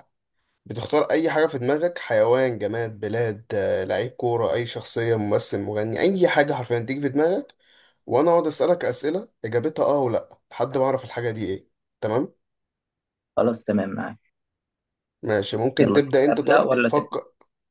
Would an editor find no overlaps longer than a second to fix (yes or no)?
no